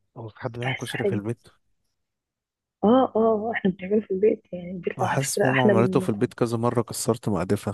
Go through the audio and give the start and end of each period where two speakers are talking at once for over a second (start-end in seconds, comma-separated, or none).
5.0-6.3